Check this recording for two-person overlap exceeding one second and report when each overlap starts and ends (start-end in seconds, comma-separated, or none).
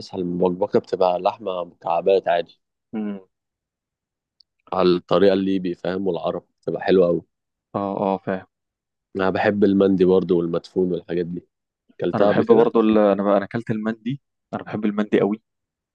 none